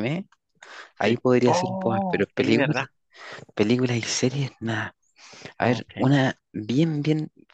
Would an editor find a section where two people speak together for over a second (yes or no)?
yes